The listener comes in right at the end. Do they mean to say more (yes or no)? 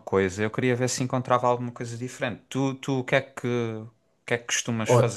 yes